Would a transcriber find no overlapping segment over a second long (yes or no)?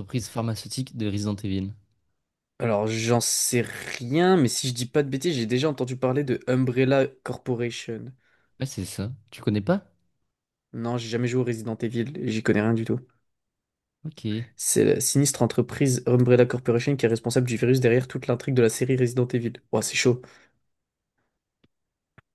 yes